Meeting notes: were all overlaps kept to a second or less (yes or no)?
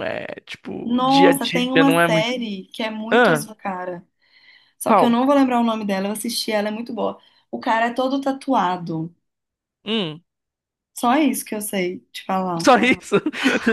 no